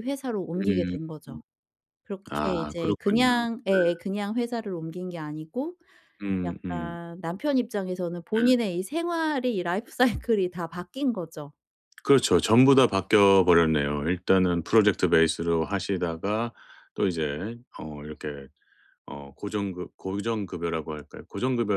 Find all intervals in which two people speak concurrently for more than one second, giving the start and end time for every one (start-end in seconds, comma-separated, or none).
2.3-3.8